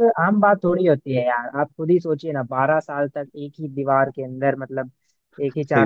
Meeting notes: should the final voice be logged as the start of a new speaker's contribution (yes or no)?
no